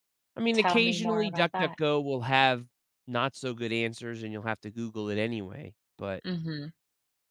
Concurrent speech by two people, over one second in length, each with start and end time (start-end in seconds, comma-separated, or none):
0.5-1.8